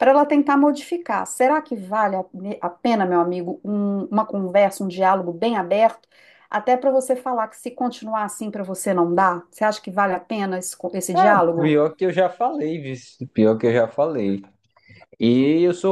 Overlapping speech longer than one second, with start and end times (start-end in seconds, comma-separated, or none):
none